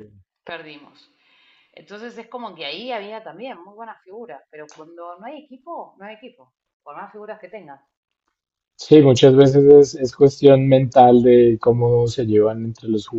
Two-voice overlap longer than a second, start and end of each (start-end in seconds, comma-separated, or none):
none